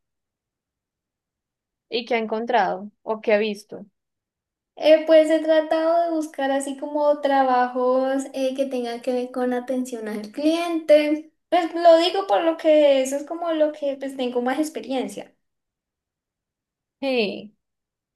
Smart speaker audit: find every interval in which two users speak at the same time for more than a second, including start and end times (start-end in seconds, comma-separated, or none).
none